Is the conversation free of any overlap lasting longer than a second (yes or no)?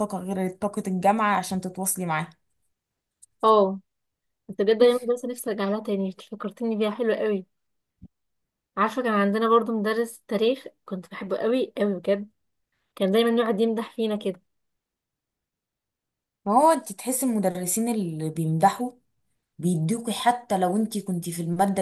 yes